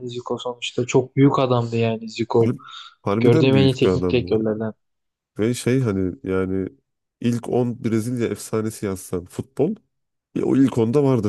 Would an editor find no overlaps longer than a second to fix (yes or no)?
no